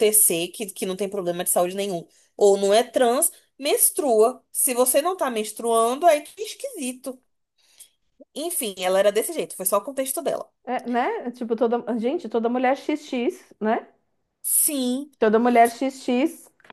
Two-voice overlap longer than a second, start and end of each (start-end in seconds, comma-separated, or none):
none